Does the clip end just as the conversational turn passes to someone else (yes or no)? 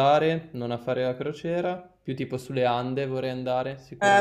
yes